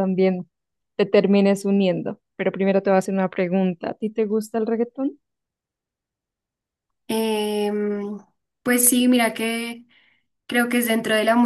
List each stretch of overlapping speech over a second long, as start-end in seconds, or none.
none